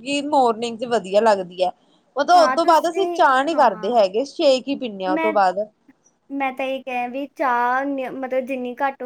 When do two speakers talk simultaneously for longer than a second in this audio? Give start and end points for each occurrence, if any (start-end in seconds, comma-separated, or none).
2.4-4.0